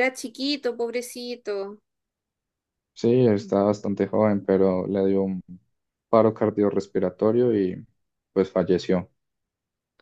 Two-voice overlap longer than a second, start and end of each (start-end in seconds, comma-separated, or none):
none